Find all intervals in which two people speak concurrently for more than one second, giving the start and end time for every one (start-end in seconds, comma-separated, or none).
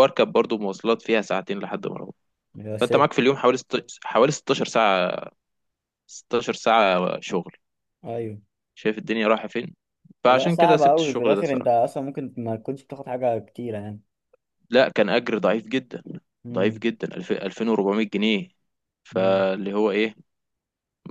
10.2-11.7